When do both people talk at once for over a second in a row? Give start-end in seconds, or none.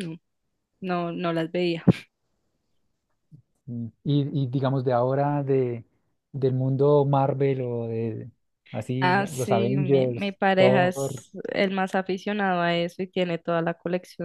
9.0-11.1